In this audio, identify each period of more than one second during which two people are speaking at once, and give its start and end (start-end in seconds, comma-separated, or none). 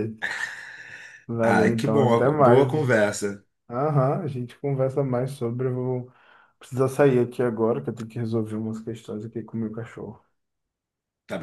1.4-3.1